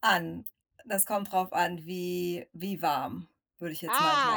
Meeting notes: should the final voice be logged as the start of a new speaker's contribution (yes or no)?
yes